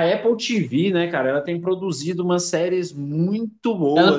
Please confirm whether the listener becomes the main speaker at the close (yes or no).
yes